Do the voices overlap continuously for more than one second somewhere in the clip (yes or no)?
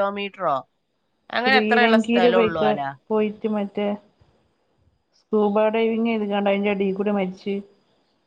yes